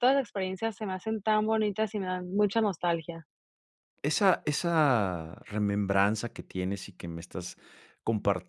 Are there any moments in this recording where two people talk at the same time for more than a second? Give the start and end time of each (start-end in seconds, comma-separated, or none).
none